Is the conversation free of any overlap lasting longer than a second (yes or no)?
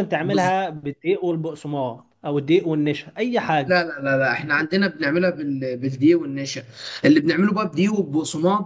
yes